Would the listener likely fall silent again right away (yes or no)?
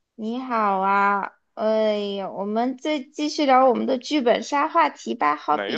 no